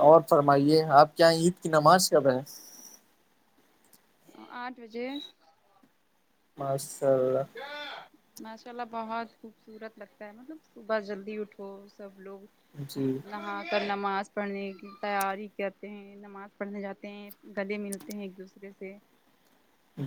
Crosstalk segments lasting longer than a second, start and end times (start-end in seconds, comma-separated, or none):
none